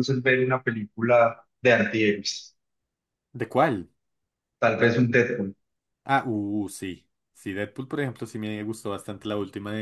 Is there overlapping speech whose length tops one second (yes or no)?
no